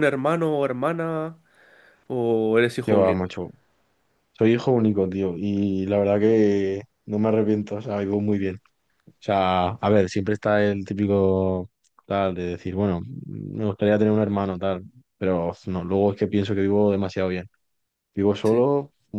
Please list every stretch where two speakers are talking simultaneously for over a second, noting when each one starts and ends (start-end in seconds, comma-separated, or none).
none